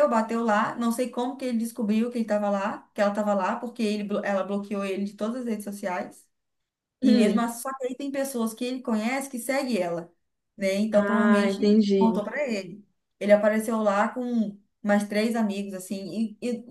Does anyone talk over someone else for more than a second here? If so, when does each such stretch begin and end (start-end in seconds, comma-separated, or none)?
10.9-12.2